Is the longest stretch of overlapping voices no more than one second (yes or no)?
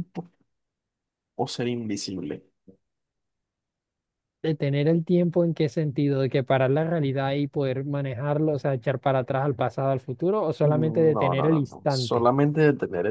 no